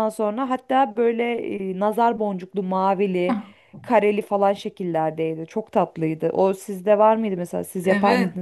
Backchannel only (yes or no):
no